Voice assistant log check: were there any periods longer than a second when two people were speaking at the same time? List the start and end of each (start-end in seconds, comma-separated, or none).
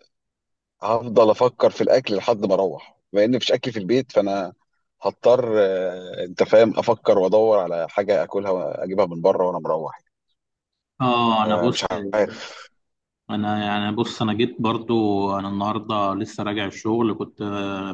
none